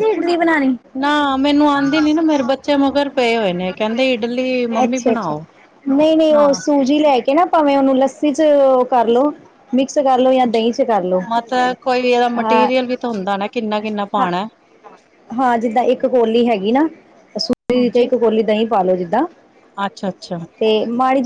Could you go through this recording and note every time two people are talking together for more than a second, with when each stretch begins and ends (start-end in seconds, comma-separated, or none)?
none